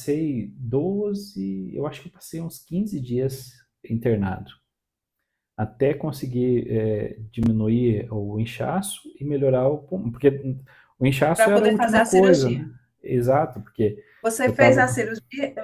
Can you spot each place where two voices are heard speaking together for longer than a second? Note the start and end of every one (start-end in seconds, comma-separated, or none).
11.3-12.7